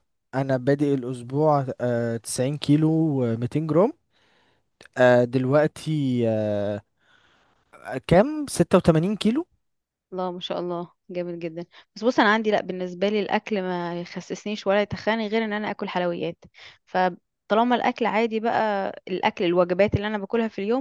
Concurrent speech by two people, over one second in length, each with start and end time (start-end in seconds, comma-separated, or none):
none